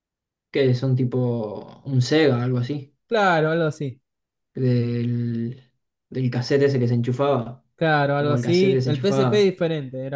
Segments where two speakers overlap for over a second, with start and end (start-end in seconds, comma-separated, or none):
8.2-9.5